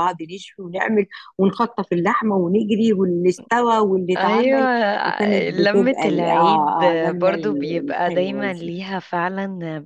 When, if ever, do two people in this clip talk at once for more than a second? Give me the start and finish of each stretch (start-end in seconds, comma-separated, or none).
5.5-8.7